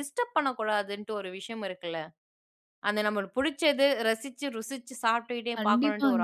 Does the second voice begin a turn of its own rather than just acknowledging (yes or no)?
yes